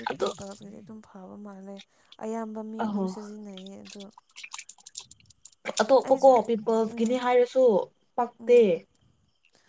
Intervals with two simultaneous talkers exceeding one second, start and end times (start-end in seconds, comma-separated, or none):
none